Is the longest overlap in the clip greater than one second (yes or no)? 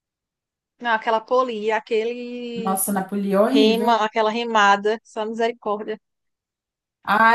no